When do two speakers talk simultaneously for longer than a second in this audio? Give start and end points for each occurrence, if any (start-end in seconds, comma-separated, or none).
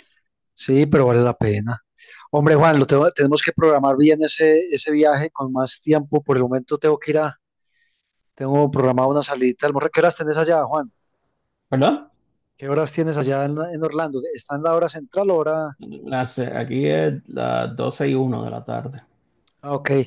none